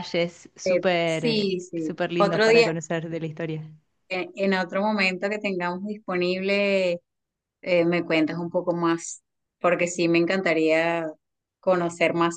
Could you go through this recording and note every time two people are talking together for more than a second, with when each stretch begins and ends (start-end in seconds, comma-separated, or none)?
0.7-2.7